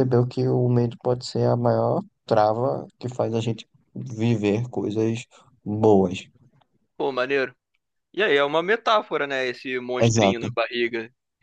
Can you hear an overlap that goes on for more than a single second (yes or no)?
no